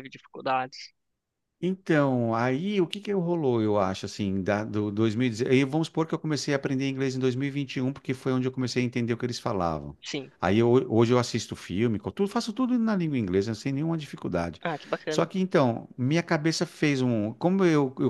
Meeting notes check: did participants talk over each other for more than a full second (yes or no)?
no